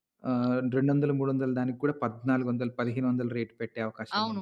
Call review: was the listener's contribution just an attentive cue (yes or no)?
no